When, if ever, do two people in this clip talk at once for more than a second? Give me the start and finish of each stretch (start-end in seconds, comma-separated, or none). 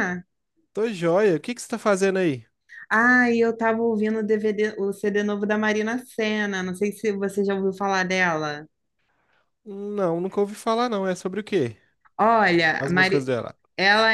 none